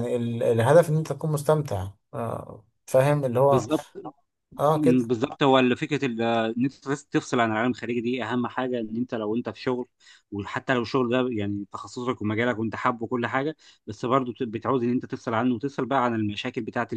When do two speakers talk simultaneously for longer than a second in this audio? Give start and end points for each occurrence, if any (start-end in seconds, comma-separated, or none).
none